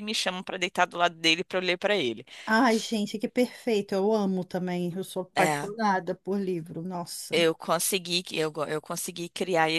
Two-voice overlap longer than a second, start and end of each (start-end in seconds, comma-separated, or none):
none